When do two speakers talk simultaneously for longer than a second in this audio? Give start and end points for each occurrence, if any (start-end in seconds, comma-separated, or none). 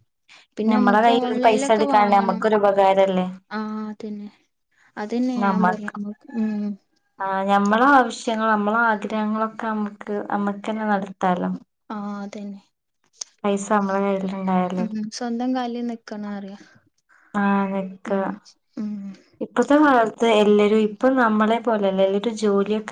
0.7-2.4